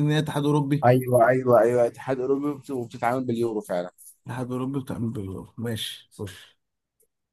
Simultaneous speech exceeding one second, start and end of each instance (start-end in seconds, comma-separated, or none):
none